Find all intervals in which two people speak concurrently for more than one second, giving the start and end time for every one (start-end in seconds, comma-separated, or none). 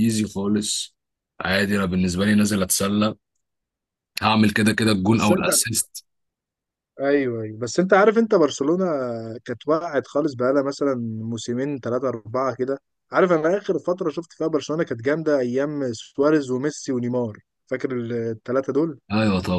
none